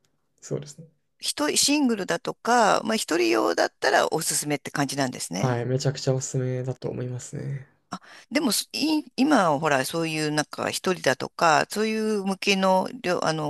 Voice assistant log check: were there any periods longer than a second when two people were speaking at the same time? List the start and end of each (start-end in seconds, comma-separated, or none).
none